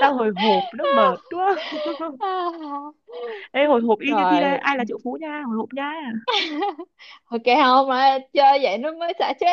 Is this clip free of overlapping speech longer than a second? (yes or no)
yes